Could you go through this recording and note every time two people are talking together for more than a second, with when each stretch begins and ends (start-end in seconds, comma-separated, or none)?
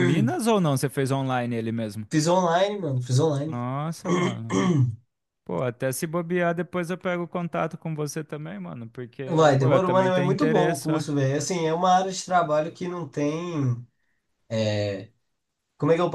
9.6-11.0